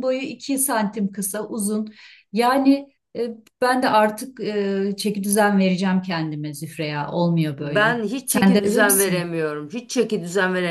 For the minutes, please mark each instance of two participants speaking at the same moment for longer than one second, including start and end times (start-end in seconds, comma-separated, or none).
7.6-9.3